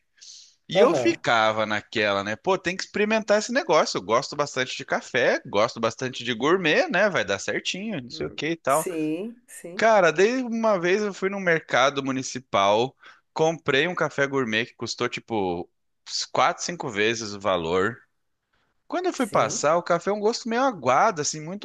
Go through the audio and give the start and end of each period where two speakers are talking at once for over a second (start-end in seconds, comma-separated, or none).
none